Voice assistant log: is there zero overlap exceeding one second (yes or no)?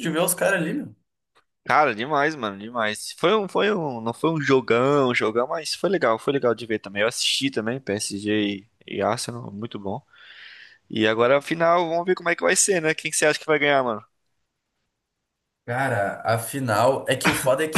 yes